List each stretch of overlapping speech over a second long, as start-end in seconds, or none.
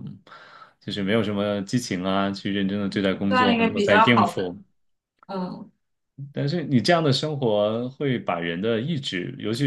3.3-4.5